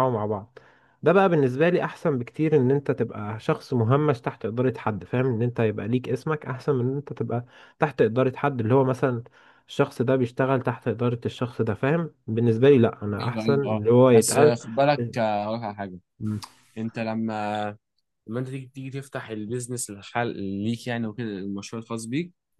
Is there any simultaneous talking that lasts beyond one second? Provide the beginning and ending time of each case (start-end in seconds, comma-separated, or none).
13.2-14.6